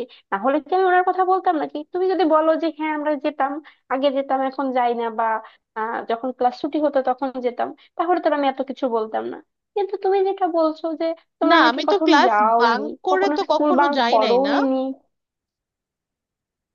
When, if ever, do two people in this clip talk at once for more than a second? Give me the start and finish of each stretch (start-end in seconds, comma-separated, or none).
11.5-14.5